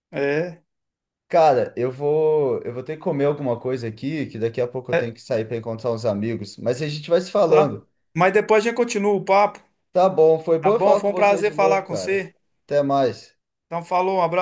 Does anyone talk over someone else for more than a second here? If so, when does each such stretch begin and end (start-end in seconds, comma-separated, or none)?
10.6-12.2